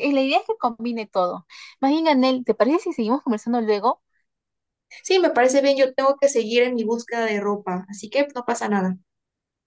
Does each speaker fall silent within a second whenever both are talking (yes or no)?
yes